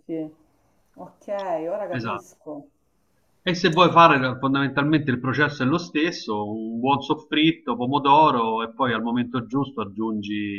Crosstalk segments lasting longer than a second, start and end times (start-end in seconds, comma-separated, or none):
none